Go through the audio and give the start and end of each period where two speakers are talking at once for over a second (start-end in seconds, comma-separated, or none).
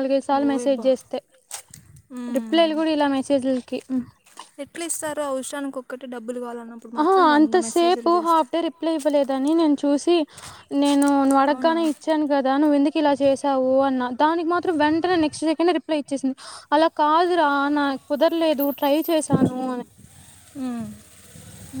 7.0-8.5